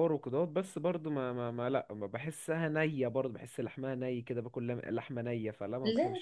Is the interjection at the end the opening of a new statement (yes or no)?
yes